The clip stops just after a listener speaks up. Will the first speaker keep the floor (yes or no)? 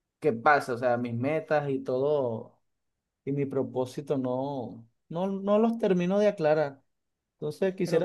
yes